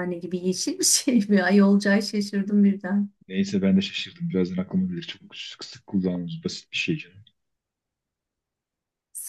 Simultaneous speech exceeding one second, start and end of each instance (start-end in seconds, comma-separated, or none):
none